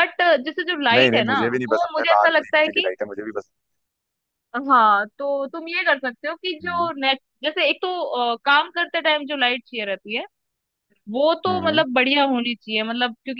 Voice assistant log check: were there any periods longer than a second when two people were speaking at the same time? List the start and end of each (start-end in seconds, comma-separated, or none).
0.9-2.9